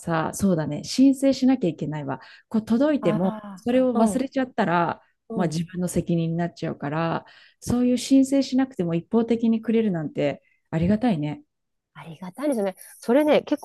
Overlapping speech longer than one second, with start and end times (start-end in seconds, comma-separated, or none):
none